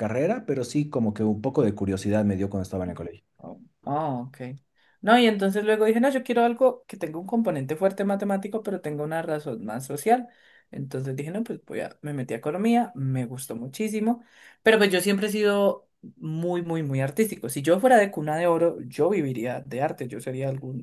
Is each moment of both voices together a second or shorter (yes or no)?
yes